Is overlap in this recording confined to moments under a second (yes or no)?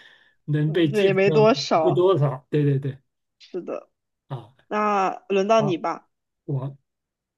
no